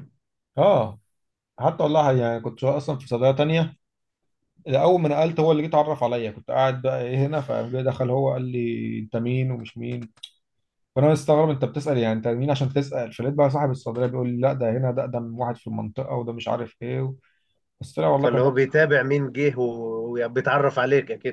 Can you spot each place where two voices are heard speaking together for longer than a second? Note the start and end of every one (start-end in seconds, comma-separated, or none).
none